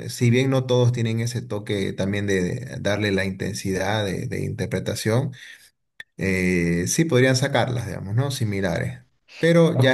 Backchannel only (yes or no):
no